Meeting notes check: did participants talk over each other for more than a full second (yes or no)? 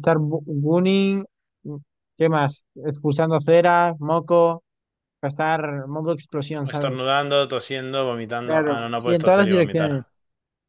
yes